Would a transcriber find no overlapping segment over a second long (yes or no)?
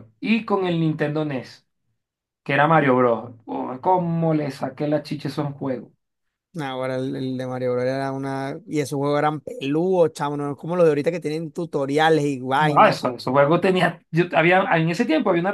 yes